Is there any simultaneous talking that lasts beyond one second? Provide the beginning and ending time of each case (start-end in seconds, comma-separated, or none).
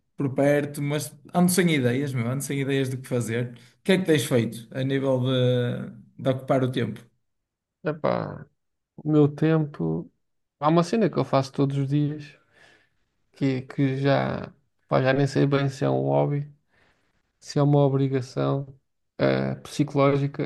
none